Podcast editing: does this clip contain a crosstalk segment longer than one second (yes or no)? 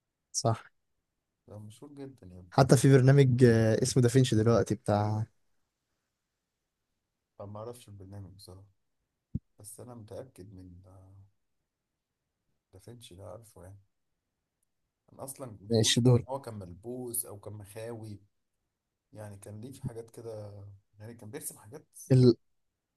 no